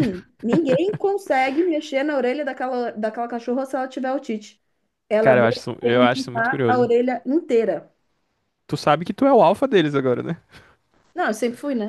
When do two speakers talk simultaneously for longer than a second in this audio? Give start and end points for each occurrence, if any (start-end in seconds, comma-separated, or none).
5.2-6.9